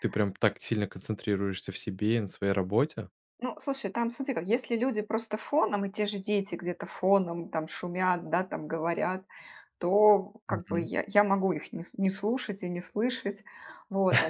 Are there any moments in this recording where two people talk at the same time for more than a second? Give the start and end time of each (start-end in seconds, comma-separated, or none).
none